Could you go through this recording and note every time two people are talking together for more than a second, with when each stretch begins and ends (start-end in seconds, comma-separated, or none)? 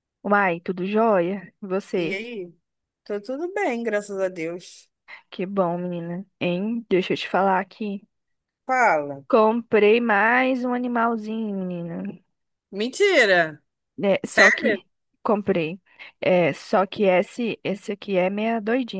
none